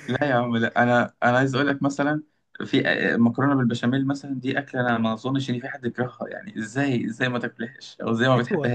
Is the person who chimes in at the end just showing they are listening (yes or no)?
no